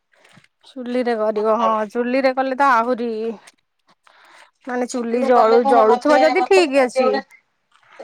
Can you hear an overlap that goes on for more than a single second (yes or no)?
yes